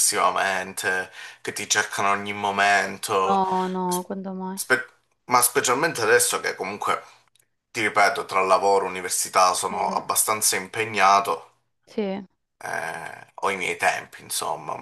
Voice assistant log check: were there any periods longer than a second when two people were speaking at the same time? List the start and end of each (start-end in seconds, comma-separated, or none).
none